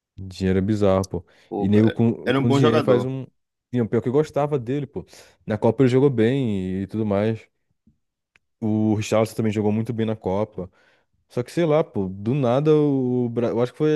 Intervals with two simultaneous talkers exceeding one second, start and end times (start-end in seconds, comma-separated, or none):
1.5-3.1